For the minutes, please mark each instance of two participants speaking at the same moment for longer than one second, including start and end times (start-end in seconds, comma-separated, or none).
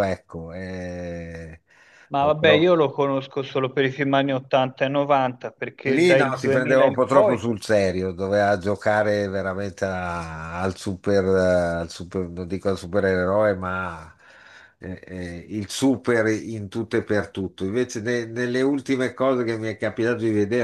5.9-7.4